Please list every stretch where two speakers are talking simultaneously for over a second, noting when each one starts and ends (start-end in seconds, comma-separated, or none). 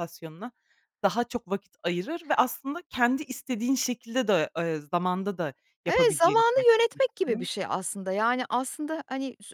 5.9-7.5